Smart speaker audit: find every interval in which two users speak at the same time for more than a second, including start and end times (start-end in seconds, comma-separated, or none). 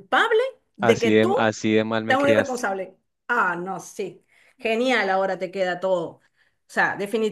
none